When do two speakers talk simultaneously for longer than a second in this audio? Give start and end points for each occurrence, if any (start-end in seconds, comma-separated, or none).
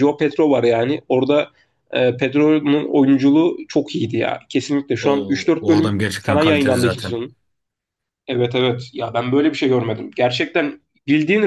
5.0-7.1